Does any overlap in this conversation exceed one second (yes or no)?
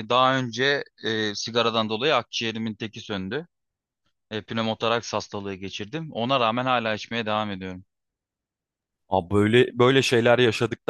no